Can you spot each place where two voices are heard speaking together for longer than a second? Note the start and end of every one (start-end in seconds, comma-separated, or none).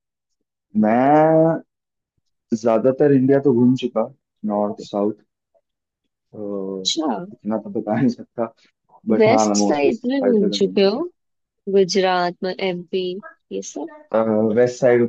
9.2-11.0